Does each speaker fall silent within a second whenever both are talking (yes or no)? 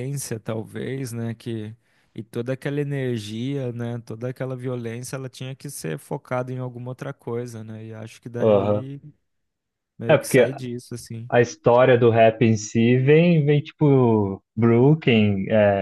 yes